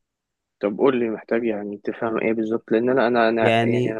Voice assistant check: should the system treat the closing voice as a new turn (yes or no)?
no